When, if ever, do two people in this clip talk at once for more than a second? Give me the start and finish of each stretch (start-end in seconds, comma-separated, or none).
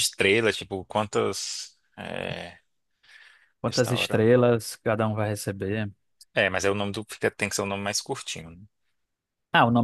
none